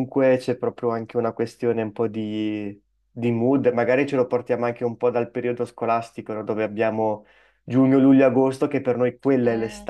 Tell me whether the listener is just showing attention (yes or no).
yes